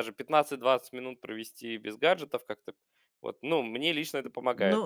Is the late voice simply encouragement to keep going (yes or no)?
no